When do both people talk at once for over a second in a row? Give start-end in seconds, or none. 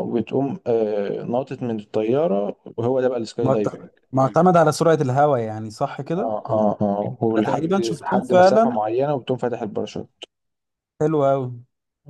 7.4-8.8